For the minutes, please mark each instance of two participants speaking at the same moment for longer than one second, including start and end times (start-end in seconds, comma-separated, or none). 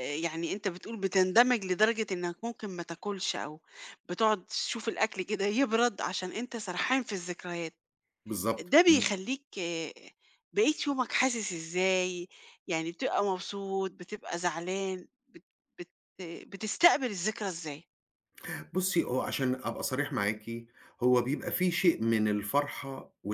none